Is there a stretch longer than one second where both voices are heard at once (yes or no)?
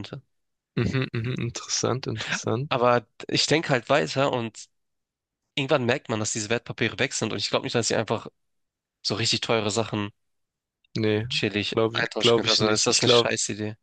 yes